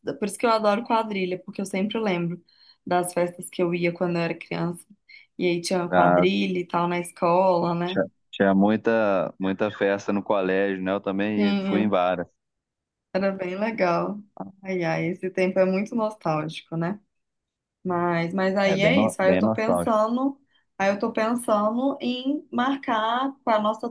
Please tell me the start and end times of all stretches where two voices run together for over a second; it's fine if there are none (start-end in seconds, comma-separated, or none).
18.6-20.0